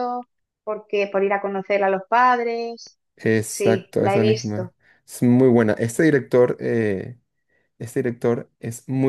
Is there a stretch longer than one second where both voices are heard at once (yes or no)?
yes